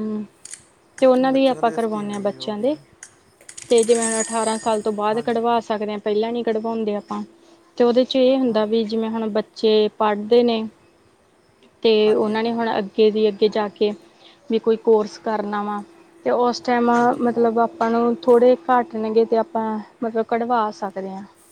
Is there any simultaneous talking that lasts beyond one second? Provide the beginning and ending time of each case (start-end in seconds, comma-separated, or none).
1.3-2.8